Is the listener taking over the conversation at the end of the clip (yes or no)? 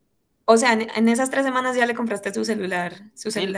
yes